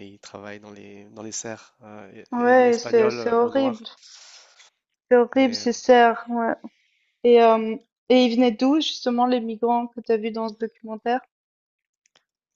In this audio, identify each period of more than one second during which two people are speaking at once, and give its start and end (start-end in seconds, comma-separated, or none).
2.3-3.8